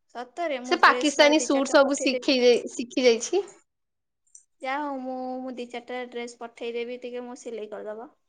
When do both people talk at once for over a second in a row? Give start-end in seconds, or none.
0.7-2.3